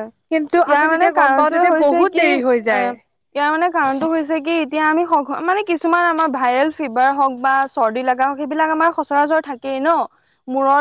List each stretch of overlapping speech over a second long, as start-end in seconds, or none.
0.7-2.8